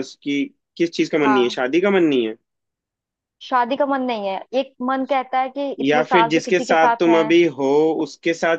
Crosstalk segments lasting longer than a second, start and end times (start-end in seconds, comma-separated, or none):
5.8-7.2